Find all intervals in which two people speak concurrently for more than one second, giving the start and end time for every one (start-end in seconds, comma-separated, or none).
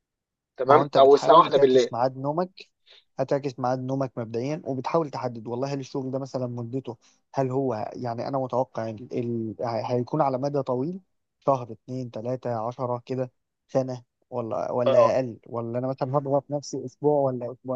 0.6-1.9